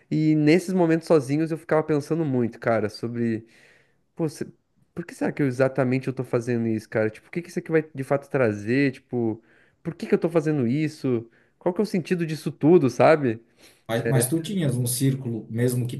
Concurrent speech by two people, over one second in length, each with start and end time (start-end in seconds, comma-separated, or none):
none